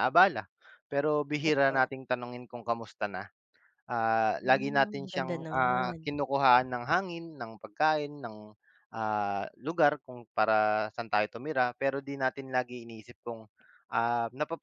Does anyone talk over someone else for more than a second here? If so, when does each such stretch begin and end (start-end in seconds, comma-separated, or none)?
4.4-6.0